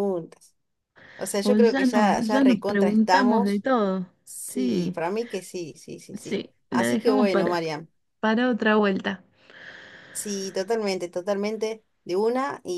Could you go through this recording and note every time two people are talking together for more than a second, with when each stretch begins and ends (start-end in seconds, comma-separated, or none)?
1.4-3.6, 6.2-7.6